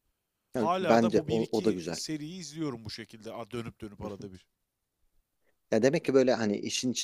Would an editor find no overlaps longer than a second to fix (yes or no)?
no